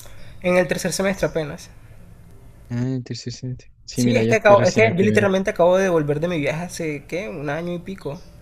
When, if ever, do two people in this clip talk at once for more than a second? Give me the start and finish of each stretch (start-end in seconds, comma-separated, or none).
3.9-5.3